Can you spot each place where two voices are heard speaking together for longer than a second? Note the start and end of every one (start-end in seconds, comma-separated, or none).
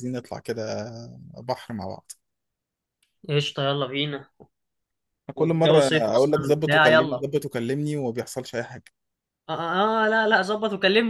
5.3-7.2